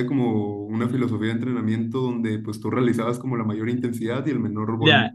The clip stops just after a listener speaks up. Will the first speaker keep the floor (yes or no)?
no